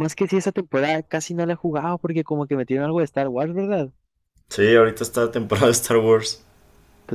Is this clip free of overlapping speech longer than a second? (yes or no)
yes